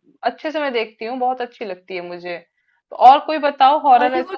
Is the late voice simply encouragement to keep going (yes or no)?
yes